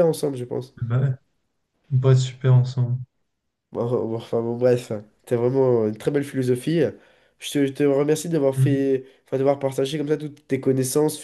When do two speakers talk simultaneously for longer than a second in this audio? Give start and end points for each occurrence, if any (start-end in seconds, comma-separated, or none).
none